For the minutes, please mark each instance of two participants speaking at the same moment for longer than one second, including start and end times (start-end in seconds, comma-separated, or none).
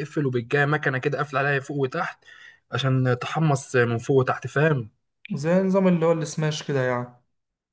none